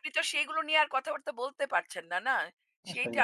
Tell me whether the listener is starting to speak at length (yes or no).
no